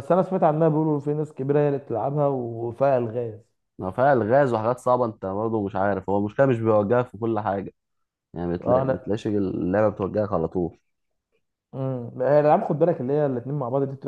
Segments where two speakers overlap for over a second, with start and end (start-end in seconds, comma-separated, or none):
none